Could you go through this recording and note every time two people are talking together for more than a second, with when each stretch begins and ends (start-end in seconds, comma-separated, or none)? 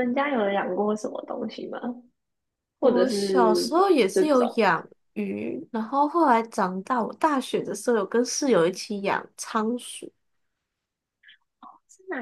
2.8-4.6